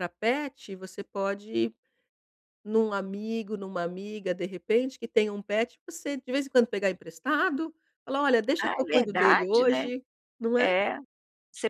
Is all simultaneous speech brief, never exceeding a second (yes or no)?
no